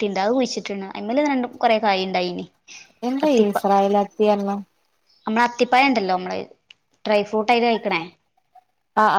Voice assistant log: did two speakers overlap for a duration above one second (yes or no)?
no